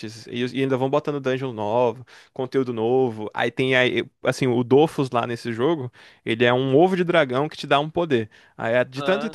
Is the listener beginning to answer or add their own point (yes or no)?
no